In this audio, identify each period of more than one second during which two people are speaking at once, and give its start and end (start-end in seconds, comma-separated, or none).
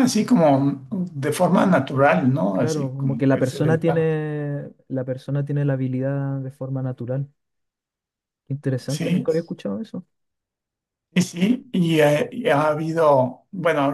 2.5-4.1